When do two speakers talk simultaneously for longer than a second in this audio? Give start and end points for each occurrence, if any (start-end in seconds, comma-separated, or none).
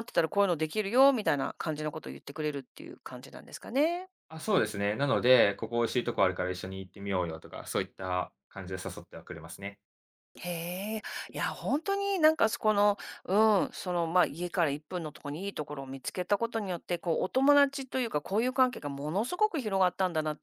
none